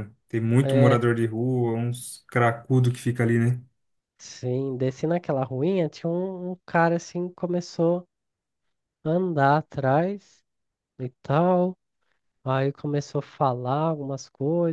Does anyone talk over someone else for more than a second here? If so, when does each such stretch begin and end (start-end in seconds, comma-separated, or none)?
none